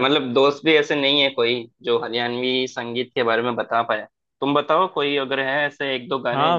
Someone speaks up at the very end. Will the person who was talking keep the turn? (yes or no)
no